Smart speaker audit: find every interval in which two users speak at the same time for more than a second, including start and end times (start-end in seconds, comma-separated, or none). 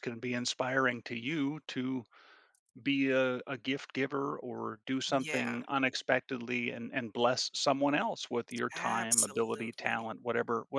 8.7-10.1